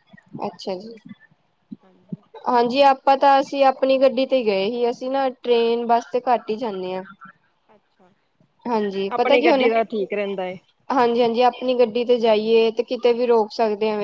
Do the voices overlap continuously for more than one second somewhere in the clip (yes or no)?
no